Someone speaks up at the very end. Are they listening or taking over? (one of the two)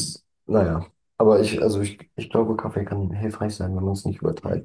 taking over